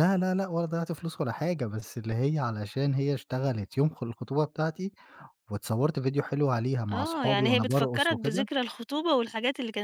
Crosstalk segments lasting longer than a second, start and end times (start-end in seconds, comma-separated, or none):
6.9-8.5